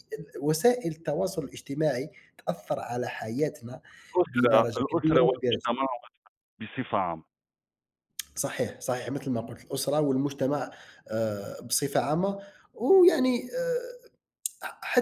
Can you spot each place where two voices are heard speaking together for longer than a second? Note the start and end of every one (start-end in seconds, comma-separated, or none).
4.3-5.7